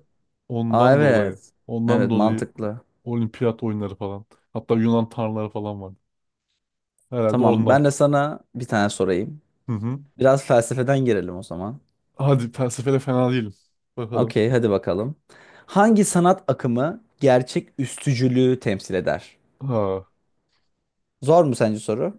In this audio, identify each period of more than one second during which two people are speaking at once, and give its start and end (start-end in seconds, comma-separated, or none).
0.7-2.5